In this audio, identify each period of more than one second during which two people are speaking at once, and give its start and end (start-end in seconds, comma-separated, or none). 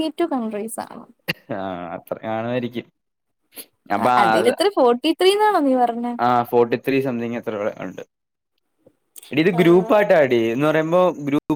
none